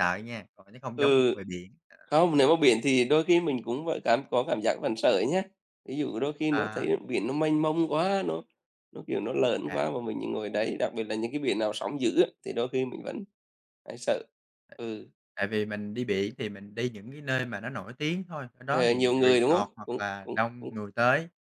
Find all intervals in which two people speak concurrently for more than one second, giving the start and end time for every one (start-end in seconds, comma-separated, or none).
18.6-20.7